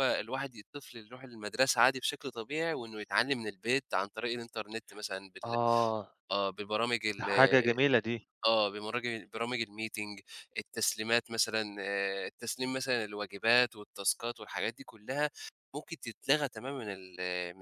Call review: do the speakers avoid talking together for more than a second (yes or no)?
yes